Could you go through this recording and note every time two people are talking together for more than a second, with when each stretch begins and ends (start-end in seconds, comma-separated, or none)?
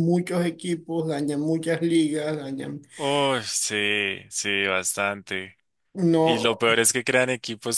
none